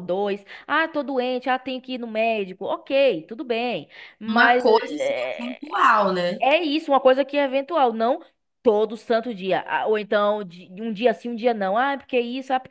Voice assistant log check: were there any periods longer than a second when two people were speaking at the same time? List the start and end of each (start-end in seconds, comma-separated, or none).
4.3-5.7